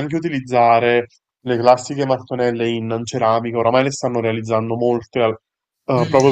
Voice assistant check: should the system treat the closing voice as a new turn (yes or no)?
yes